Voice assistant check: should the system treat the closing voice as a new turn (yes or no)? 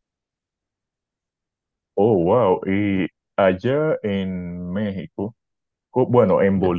no